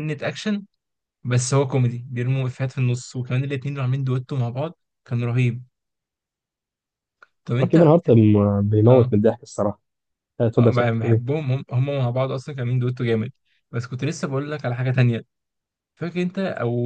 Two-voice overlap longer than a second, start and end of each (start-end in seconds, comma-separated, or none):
none